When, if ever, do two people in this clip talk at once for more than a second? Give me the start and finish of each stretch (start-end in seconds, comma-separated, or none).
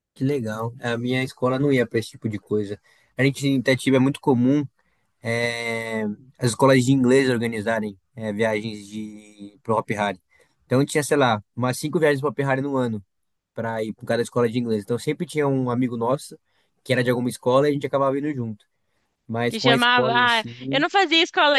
19.5-20.8